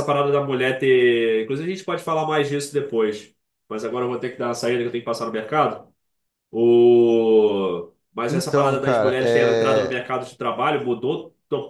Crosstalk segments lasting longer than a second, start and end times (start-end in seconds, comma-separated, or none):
8.3-10.0